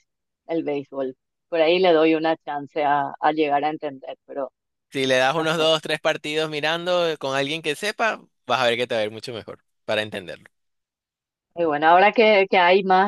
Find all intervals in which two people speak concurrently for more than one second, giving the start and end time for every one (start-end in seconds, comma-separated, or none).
none